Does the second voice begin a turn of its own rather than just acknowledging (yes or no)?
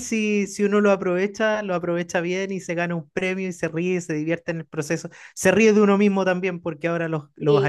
no